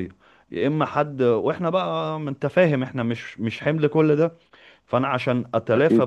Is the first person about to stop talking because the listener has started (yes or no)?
no